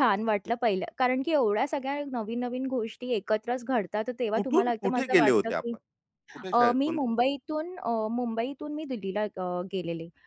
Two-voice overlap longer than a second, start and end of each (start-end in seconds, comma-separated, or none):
4.3-5.8